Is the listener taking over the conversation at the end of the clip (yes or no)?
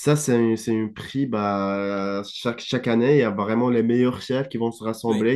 no